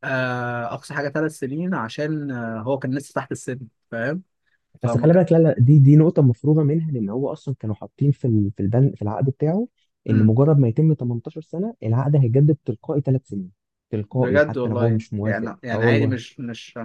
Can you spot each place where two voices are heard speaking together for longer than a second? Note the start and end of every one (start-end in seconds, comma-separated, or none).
14.1-16.1